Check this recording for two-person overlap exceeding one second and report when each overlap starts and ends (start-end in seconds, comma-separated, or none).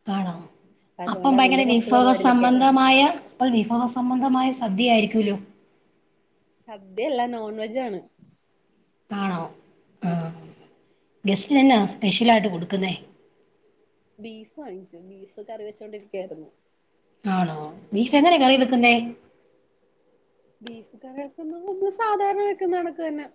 1.1-2.7